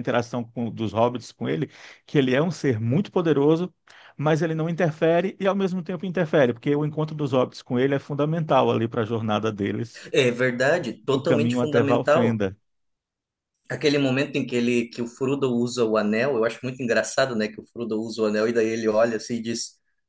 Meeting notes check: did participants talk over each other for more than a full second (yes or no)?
yes